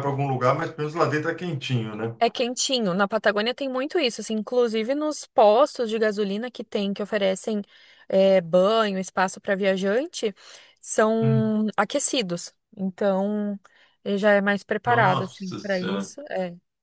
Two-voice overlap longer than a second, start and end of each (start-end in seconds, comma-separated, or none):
14.9-16.1